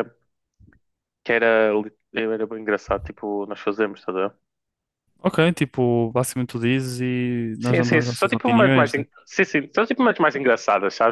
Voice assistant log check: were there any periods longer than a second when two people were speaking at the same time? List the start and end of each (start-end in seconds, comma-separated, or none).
7.6-9.0